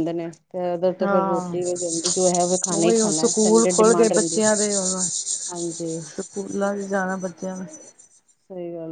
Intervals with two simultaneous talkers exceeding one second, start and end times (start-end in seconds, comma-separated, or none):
2.8-4.4